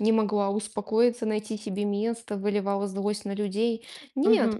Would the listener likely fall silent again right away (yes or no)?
no